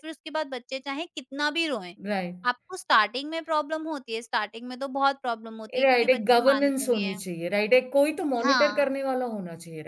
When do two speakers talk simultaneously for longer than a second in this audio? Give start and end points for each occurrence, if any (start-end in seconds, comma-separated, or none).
5.8-7.2